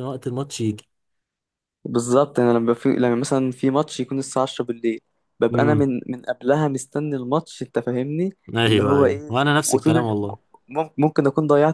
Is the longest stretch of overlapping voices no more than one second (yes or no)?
no